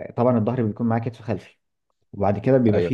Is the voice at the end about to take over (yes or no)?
no